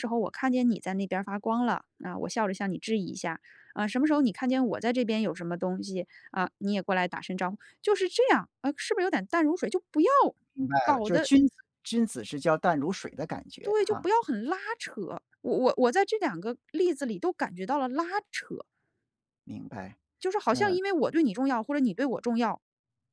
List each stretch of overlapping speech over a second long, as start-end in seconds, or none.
none